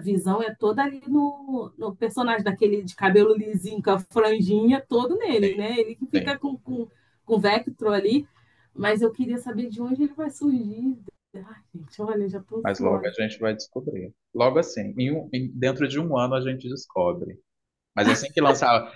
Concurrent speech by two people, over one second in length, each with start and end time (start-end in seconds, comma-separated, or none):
none